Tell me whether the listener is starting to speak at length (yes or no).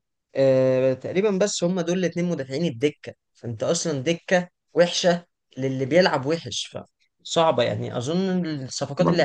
no